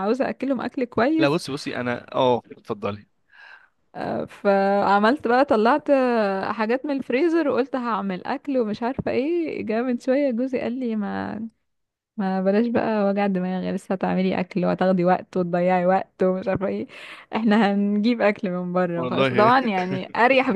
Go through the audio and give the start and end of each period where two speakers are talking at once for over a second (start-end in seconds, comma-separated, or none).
none